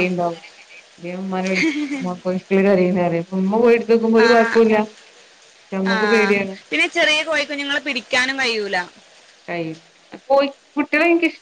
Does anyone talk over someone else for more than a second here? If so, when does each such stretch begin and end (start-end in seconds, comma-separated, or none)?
none